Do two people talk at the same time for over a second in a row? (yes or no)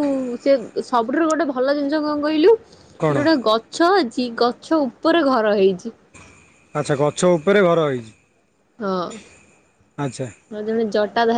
no